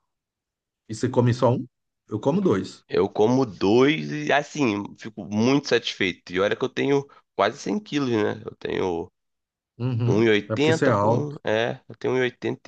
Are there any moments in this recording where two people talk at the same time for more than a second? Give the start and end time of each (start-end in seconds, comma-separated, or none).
10.1-11.4